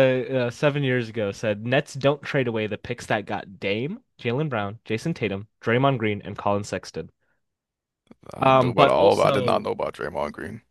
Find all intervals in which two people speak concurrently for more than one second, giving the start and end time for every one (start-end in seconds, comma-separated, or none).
8.4-9.7